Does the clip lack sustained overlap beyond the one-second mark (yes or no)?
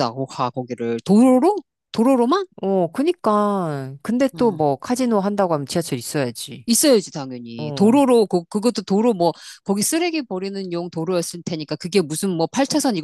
yes